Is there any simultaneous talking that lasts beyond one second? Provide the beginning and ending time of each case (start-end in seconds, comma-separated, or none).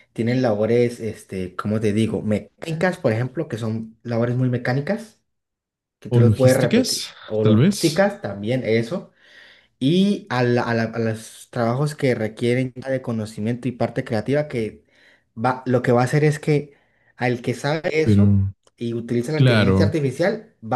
6.1-8.0